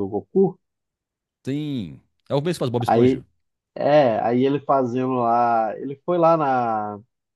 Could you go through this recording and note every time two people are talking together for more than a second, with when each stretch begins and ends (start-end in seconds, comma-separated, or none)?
none